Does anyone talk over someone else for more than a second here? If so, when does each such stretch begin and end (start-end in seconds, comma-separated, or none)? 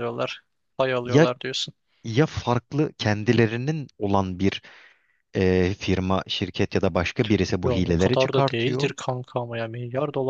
7.6-8.9